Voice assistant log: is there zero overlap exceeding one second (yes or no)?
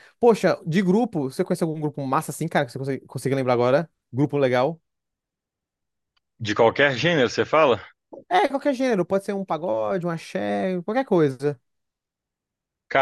yes